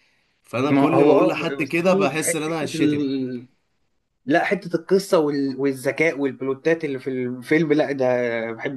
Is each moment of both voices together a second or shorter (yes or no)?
no